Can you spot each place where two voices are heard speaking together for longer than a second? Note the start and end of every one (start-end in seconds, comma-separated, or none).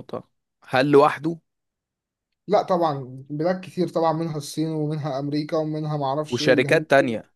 none